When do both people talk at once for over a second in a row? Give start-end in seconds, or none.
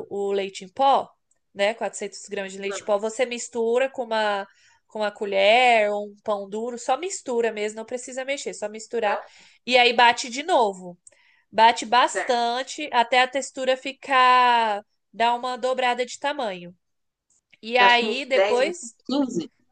17.7-18.9